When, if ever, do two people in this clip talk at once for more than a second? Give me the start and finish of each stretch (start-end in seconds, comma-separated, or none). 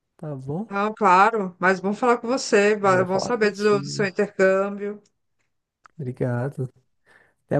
2.8-4.1